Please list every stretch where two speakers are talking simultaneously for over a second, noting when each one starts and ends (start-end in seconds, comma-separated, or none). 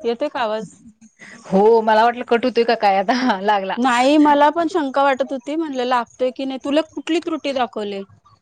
none